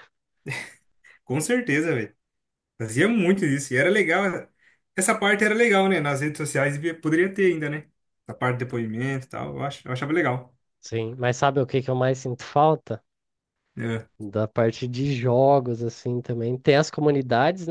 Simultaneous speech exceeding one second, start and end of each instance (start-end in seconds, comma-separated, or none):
none